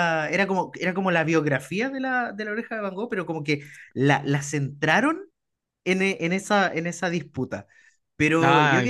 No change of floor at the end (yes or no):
yes